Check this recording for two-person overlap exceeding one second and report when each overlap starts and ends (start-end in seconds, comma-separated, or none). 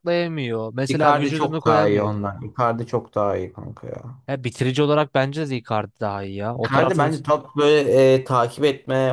0.9-2.2